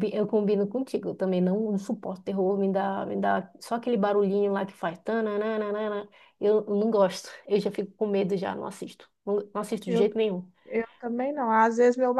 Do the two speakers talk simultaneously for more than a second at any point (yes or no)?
no